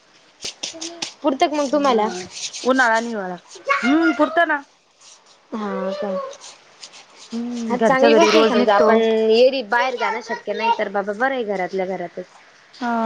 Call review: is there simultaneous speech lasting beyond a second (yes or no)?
yes